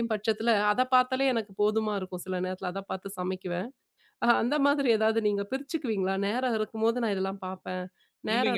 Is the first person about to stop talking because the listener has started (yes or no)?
yes